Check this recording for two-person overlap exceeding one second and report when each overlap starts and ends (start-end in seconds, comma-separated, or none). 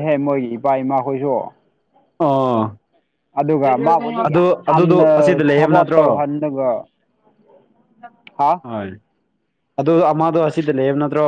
4.3-6.0